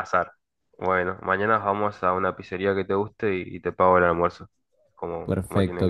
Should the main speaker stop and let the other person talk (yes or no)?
yes